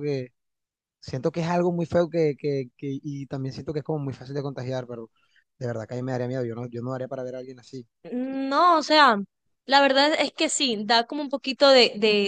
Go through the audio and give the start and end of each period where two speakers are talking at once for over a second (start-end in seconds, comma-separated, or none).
none